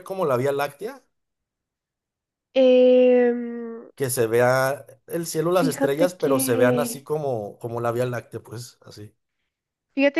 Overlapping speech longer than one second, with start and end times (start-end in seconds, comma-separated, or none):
5.5-7.1